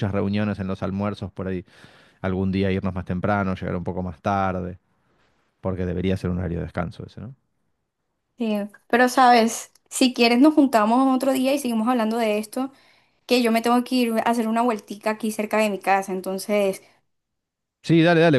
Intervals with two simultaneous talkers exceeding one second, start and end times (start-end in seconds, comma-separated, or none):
none